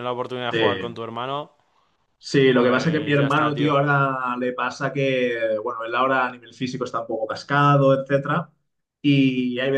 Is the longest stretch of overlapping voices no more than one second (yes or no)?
no